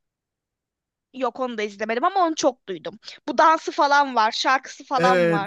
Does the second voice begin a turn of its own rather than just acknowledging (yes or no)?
yes